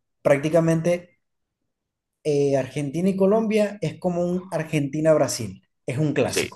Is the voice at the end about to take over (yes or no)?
yes